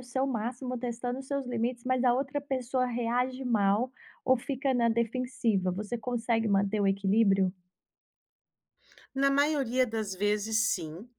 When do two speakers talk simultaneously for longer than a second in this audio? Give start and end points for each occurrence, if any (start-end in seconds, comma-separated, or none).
none